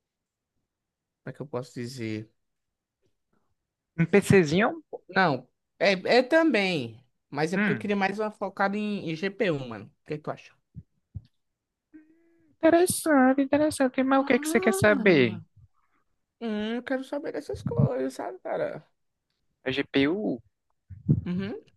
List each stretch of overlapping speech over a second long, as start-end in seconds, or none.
14.2-15.4